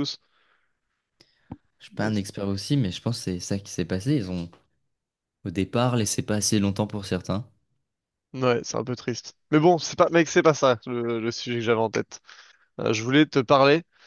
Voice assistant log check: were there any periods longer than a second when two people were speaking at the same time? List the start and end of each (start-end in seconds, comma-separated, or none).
none